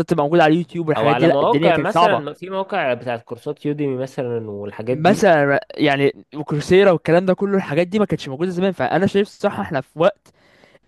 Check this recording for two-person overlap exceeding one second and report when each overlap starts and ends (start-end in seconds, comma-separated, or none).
1.0-2.4